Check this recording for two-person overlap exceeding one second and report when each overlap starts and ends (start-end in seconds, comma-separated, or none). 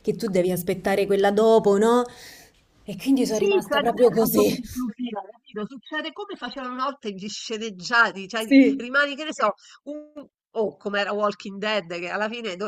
3.2-4.6